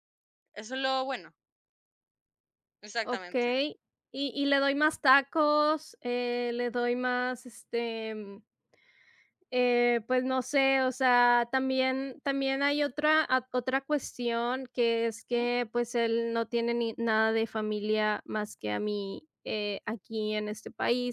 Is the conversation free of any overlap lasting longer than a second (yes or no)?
yes